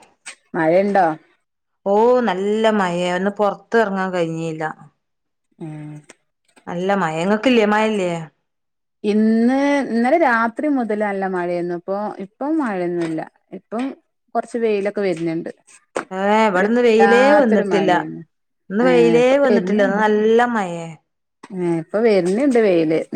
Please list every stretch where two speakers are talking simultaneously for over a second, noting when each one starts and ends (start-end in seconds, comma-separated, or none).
16.6-17.9